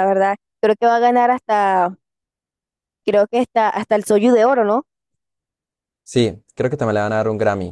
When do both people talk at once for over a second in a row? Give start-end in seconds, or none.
none